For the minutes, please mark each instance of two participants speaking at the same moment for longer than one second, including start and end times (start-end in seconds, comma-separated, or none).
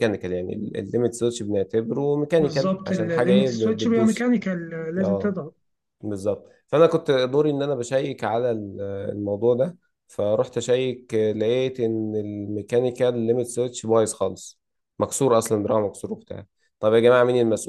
2.4-4.3